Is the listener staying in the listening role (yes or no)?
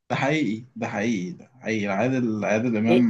no